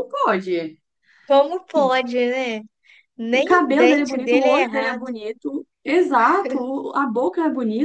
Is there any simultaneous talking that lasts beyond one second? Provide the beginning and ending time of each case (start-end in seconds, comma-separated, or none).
3.3-5.0